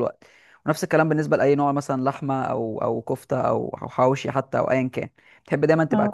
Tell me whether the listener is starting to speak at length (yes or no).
no